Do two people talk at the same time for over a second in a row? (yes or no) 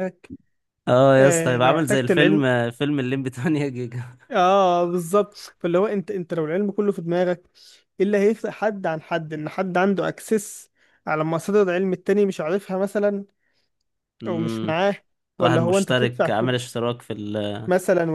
yes